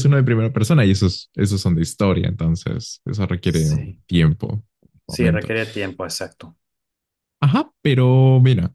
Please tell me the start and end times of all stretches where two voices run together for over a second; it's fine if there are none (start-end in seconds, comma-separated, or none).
none